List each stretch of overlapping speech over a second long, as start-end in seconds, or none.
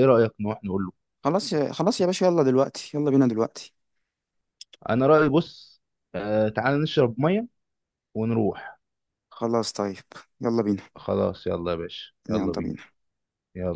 none